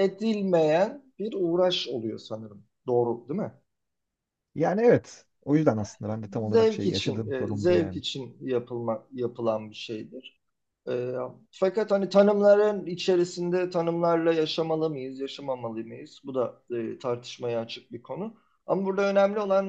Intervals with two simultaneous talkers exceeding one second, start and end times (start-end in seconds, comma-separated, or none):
6.5-8.0